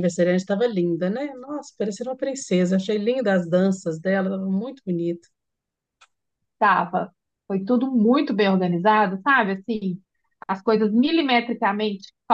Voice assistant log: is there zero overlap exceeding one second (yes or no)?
yes